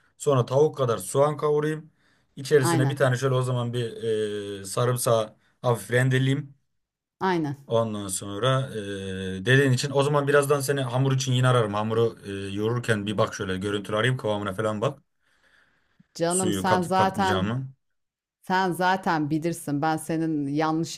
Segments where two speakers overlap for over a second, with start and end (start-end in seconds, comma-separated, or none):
16.3-17.5